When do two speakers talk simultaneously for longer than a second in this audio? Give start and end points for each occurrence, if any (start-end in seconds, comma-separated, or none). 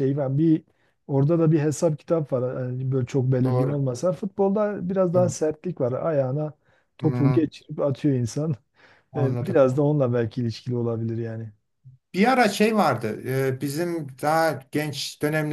none